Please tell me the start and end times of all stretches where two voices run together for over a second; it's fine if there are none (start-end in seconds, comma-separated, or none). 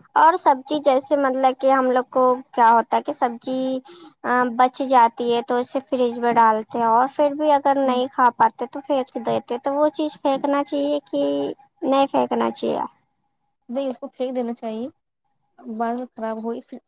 none